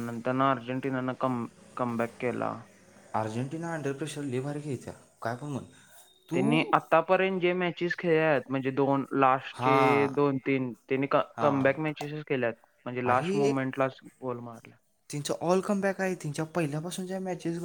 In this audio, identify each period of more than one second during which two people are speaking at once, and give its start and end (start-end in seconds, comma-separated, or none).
none